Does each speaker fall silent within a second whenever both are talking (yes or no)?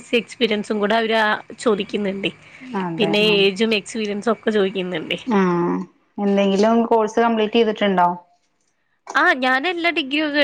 yes